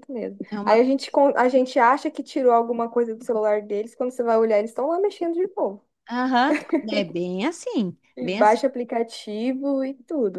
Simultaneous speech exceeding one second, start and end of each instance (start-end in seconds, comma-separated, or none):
none